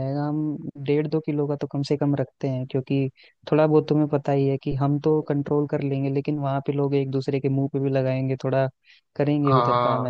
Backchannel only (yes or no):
no